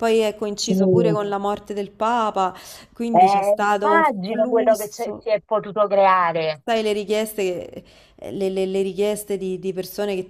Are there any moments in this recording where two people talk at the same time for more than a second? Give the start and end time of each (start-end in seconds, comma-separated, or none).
3.1-5.3